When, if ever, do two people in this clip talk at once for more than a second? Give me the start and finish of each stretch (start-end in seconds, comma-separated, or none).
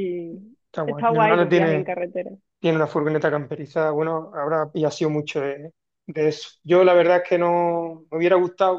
0.7-1.9